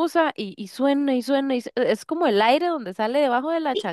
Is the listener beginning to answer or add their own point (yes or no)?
yes